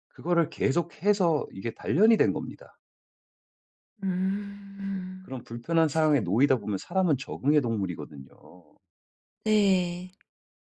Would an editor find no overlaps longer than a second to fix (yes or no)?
yes